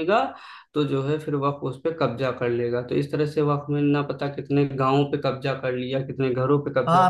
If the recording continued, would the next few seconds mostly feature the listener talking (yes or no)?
yes